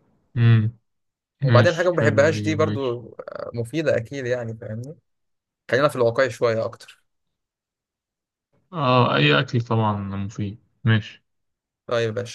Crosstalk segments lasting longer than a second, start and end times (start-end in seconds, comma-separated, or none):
1.4-3.0